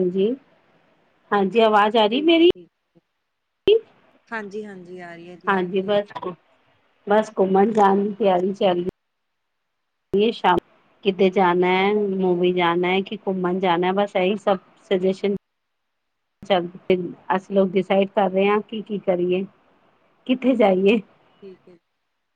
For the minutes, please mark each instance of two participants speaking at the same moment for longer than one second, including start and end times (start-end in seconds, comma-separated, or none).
none